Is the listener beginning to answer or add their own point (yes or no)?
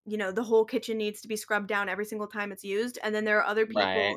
no